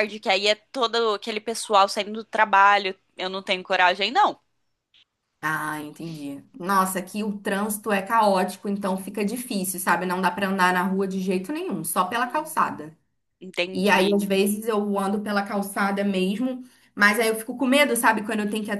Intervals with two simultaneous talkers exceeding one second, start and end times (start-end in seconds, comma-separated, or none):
none